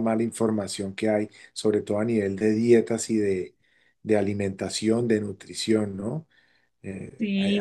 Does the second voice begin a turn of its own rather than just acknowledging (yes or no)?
yes